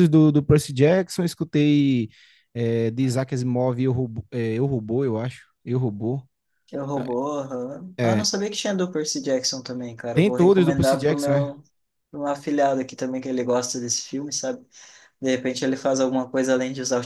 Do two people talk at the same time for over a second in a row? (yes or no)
yes